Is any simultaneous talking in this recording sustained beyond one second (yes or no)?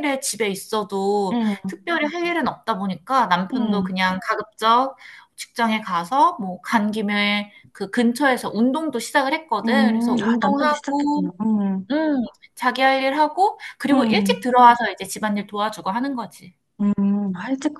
yes